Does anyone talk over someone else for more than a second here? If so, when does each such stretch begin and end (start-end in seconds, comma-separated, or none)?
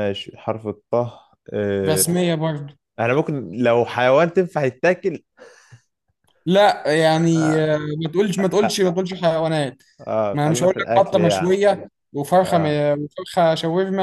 10.3-11.6